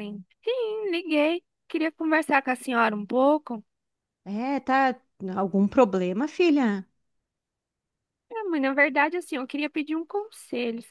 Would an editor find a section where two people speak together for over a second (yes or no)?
no